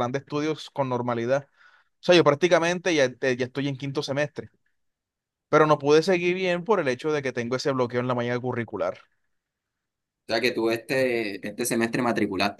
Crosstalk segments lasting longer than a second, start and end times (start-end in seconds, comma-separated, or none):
none